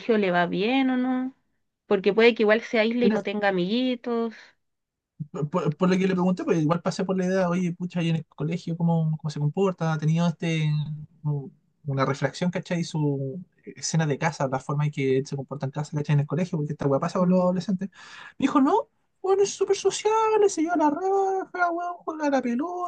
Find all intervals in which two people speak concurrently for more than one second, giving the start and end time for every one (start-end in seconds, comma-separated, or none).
none